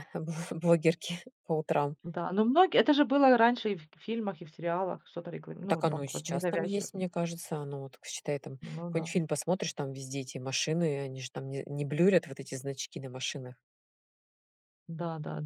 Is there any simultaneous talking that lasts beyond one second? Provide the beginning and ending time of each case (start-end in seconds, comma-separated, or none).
5.7-6.9